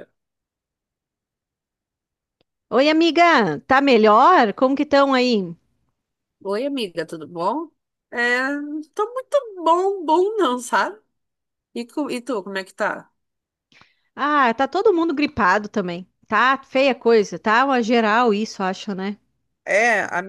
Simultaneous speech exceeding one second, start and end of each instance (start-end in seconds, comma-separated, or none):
none